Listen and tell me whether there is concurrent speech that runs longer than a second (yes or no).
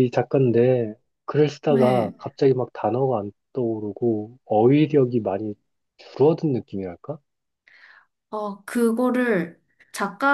no